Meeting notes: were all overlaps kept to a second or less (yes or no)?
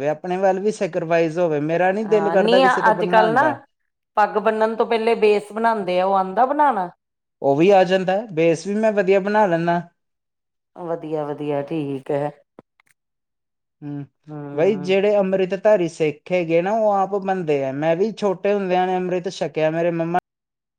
yes